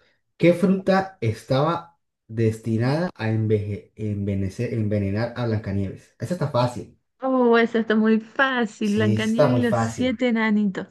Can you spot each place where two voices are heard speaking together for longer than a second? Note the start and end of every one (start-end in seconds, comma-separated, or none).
8.8-10.2